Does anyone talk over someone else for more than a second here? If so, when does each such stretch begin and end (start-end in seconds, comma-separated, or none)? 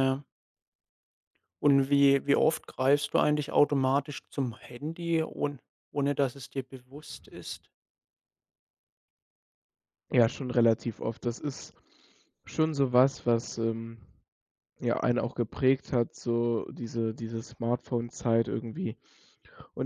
none